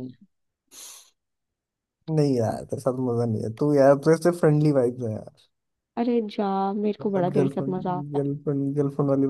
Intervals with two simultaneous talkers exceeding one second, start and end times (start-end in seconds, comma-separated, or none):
7.0-8.3